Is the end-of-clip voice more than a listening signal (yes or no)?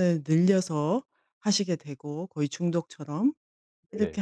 no